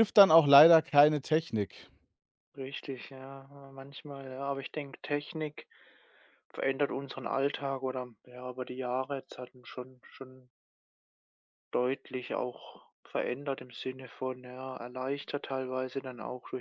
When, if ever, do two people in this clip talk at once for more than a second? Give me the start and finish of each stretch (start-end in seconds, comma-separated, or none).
none